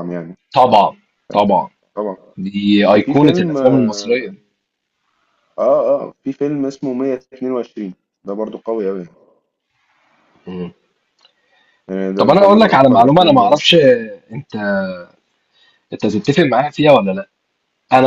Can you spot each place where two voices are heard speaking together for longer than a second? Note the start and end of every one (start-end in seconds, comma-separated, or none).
2.9-4.3, 12.2-13.6